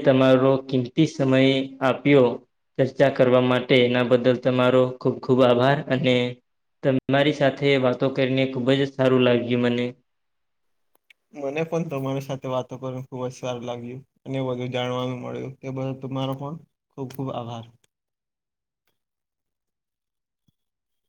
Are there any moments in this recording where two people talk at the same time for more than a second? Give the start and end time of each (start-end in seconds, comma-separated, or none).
none